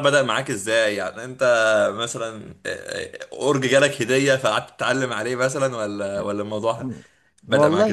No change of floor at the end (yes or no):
no